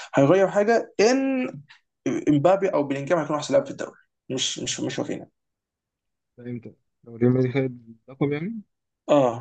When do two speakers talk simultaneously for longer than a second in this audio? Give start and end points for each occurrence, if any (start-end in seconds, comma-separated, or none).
none